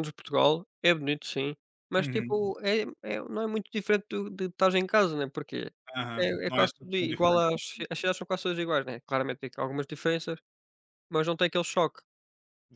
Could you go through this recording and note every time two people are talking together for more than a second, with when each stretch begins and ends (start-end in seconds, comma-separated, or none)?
6.2-7.8